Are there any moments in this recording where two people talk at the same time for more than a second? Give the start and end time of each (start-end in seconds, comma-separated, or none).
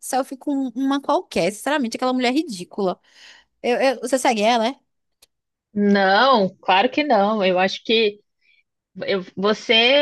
none